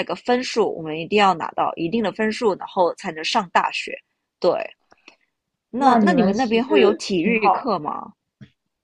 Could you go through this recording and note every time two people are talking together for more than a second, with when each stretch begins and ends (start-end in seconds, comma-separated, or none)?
5.8-7.7